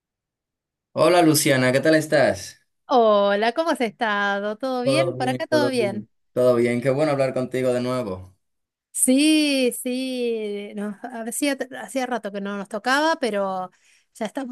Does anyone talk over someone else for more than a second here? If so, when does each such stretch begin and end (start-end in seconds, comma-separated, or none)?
4.8-6.1